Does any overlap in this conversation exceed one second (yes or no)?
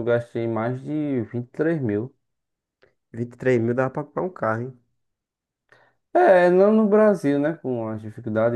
no